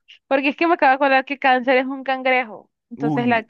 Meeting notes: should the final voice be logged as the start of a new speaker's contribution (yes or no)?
yes